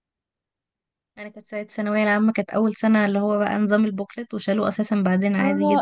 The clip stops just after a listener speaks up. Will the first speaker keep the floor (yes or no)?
no